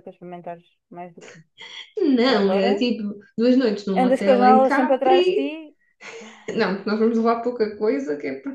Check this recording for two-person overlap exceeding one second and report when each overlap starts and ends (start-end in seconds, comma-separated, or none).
4.0-5.5